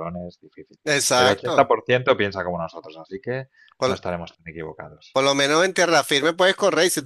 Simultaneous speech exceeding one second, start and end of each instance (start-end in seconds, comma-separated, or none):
none